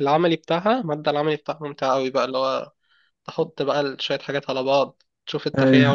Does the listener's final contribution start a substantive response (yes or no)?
no